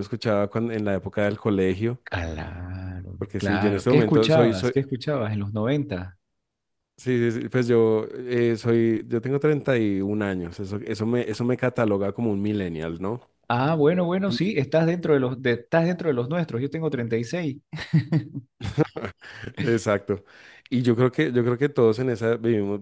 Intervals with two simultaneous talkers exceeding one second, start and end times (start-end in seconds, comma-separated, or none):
3.2-4.8